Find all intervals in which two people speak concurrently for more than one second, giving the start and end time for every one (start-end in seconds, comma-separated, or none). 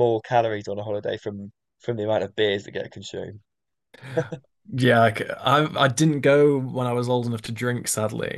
none